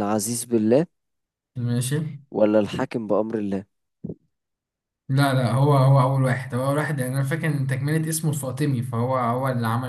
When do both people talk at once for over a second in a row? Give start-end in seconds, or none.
none